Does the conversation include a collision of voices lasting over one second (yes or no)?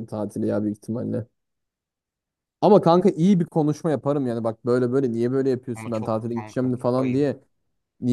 yes